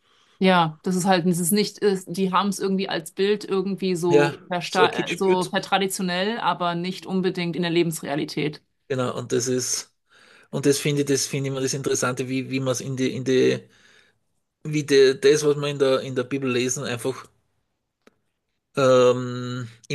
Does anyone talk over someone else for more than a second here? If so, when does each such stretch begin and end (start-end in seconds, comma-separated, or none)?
4.1-5.5